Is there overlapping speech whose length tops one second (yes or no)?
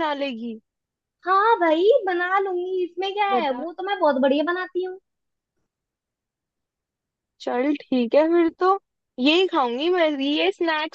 no